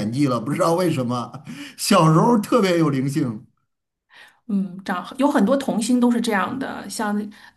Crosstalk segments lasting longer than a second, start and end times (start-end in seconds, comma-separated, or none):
none